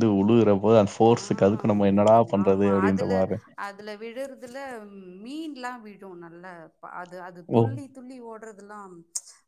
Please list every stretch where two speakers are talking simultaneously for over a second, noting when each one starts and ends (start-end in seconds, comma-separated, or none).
1.1-3.1